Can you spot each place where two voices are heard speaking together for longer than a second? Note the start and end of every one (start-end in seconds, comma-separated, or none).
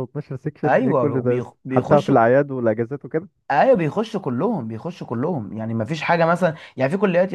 0.6-2.2